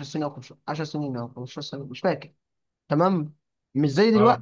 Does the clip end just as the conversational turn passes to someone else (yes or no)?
no